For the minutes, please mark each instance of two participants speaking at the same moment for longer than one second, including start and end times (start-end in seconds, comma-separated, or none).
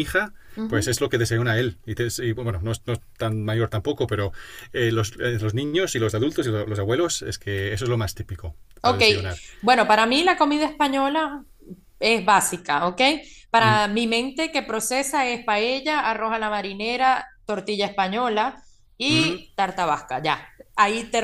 none